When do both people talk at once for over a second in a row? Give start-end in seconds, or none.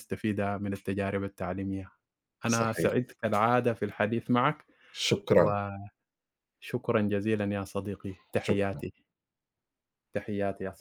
none